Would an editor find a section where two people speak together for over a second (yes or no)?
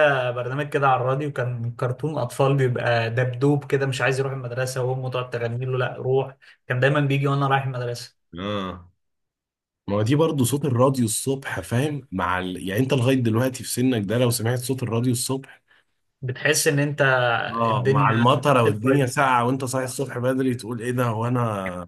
yes